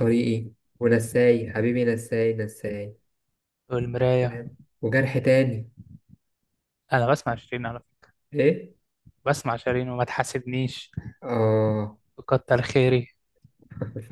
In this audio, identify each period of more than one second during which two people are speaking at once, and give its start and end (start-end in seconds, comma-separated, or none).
none